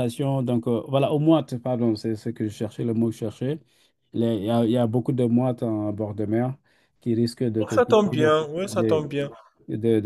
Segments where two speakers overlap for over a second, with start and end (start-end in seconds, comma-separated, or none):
7.7-9.1